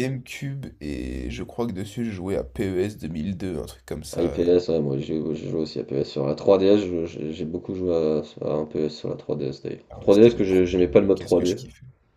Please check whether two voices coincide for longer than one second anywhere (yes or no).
yes